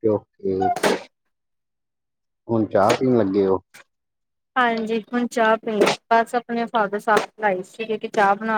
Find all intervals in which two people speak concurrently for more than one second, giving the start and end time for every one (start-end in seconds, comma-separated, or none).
none